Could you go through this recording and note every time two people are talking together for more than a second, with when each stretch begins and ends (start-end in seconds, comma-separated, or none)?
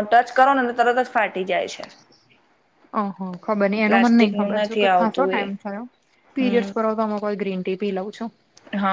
3.9-5.4